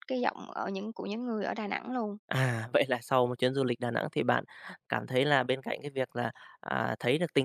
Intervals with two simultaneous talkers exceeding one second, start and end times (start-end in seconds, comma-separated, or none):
none